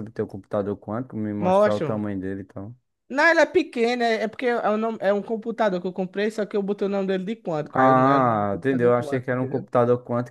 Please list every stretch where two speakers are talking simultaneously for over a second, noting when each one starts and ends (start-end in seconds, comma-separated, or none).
7.7-9.7